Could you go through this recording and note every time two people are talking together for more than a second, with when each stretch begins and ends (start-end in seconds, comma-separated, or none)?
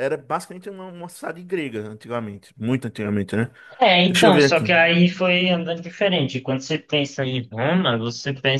none